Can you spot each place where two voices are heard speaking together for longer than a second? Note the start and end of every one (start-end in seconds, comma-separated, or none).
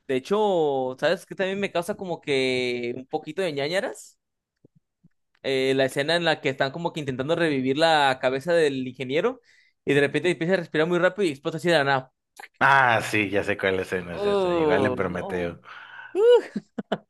14.1-15.5